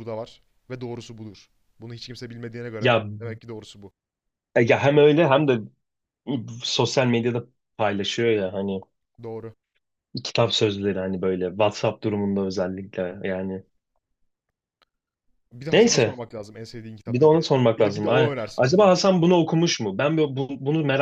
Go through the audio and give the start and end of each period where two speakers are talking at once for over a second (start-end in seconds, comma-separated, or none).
17.1-18.9